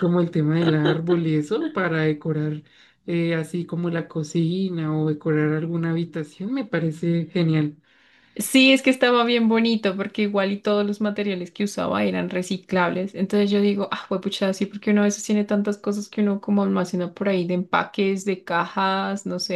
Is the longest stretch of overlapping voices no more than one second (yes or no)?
yes